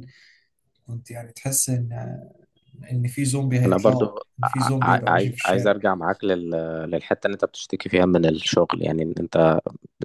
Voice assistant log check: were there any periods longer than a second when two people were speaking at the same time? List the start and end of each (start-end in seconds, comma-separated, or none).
3.6-5.8